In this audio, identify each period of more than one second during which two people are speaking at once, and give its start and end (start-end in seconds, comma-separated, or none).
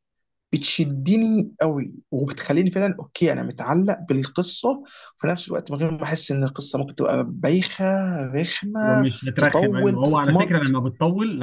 8.8-10.8